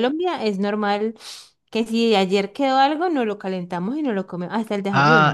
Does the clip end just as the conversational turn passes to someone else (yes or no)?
yes